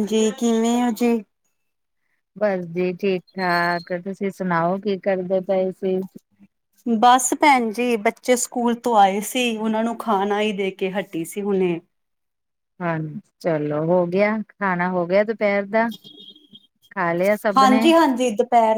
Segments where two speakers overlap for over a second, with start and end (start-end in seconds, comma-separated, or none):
none